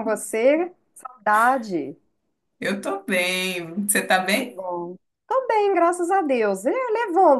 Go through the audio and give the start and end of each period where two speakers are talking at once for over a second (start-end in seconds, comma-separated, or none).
none